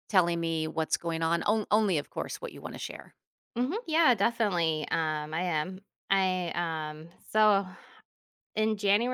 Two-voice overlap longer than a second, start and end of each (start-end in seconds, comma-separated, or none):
none